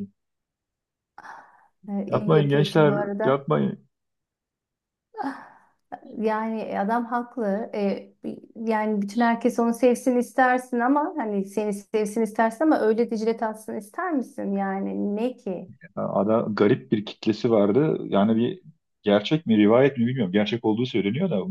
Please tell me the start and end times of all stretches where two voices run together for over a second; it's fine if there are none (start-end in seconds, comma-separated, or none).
2.1-3.4